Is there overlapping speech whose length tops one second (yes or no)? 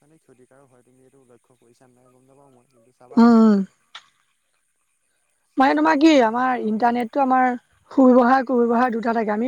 yes